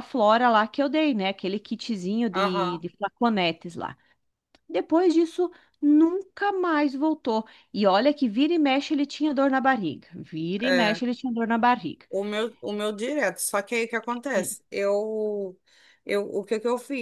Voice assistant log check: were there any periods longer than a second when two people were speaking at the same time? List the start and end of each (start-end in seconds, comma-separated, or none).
none